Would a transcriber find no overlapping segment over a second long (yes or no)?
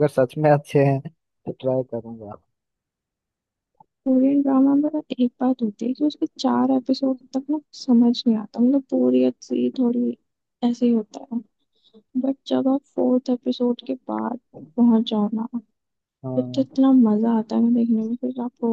yes